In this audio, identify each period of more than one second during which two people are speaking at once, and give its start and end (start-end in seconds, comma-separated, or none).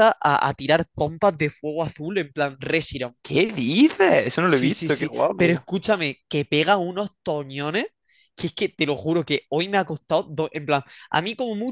4.4-5.7